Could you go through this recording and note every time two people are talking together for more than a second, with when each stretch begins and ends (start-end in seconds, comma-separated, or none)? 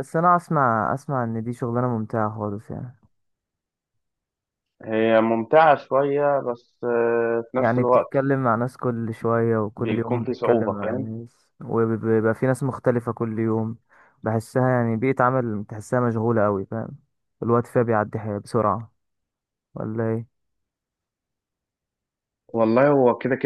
9.8-11.2